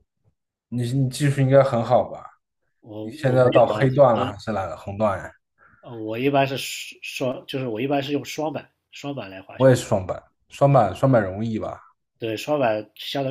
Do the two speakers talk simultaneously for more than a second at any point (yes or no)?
yes